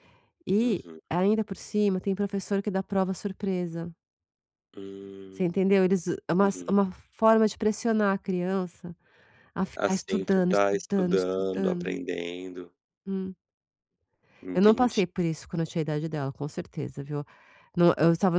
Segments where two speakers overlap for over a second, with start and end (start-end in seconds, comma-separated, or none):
9.7-12.0